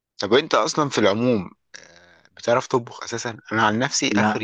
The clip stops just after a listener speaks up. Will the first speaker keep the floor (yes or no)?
yes